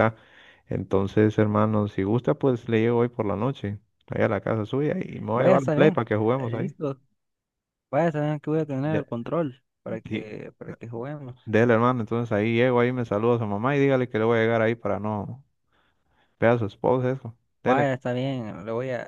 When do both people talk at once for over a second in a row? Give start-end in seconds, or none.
5.3-6.8